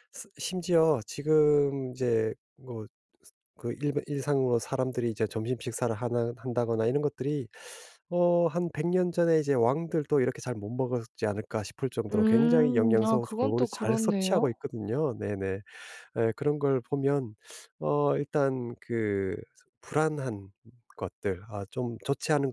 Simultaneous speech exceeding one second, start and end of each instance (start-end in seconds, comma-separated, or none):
12.1-14.6